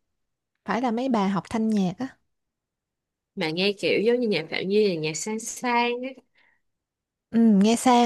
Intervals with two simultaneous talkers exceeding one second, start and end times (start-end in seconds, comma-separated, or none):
none